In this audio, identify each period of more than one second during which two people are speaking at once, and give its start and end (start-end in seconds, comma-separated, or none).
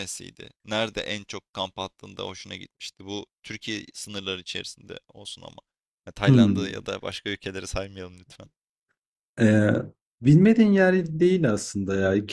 none